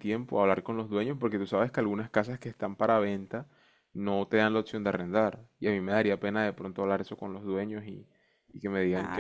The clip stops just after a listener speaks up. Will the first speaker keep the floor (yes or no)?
no